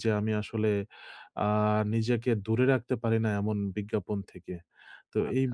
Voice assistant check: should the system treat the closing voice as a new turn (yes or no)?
no